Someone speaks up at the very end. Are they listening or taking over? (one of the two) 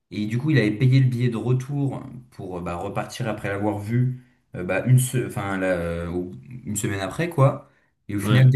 listening